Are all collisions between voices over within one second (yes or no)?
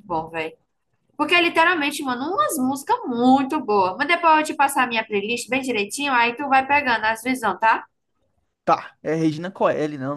yes